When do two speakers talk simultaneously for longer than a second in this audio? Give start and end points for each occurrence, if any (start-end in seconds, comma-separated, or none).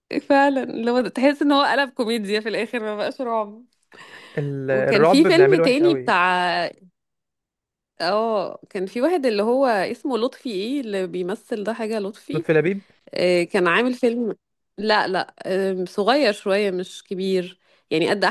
4.7-6.1